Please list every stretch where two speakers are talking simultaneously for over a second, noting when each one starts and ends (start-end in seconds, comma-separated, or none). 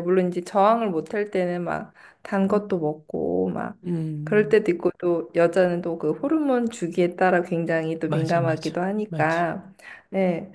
8.1-9.5